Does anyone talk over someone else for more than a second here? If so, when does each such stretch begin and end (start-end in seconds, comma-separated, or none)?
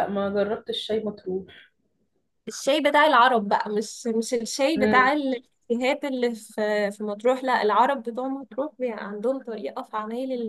none